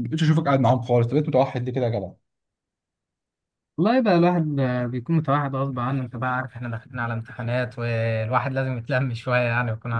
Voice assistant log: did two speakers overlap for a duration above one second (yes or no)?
no